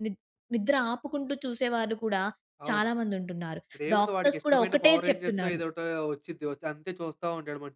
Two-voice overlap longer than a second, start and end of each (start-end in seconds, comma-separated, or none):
4.0-5.6